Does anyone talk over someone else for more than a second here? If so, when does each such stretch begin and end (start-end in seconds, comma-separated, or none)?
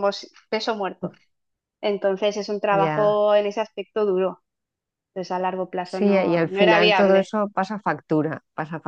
5.8-7.3